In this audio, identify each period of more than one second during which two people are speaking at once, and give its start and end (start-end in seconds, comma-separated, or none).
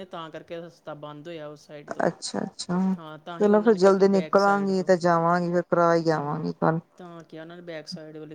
3.4-4.9